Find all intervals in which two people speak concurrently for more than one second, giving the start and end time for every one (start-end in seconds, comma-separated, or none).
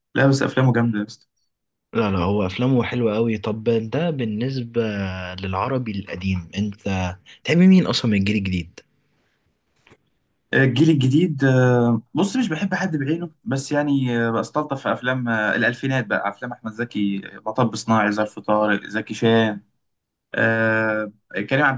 none